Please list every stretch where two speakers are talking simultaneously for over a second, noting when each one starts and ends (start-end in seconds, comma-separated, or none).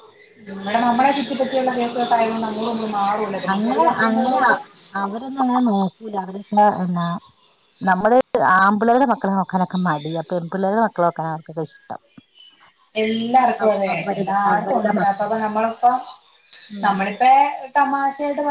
13.6-15.3